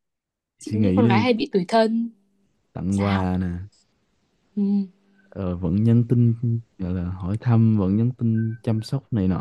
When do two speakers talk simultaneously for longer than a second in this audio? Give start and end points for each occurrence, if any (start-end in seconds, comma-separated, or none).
none